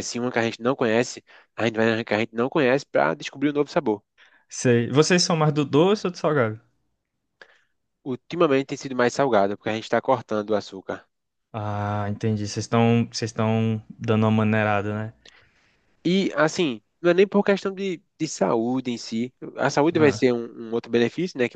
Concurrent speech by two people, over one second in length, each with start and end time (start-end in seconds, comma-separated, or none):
none